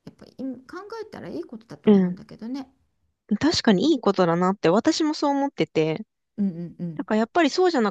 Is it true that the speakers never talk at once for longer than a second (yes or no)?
yes